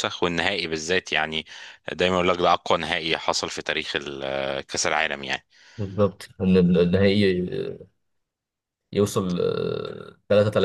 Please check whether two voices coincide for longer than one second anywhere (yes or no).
no